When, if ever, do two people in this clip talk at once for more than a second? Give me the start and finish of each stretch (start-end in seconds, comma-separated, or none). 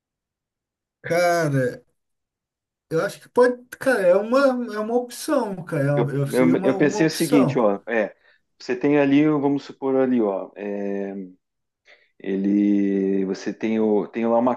6.0-7.6